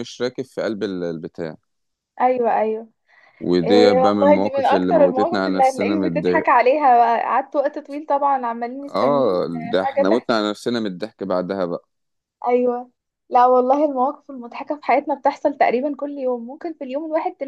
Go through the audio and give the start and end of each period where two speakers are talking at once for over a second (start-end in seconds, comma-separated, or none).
3.6-6.5, 8.9-10.3